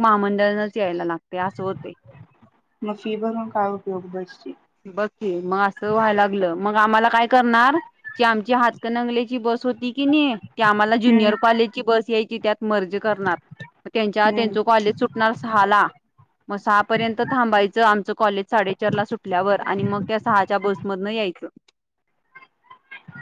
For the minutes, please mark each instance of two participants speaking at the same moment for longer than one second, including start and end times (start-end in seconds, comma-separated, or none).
none